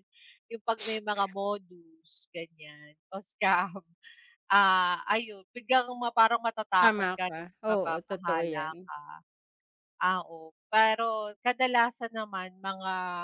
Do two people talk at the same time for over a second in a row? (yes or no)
yes